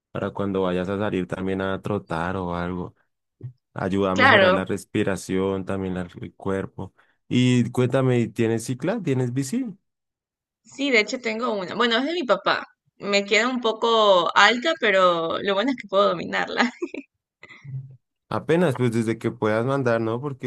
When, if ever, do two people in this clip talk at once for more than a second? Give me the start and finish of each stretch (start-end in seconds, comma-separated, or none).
none